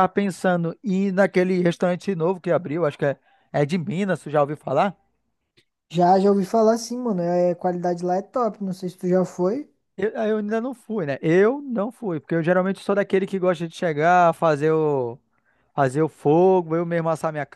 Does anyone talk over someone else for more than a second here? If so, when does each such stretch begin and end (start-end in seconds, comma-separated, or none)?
none